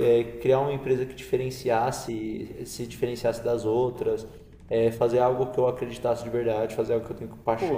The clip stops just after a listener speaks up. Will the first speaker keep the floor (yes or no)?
no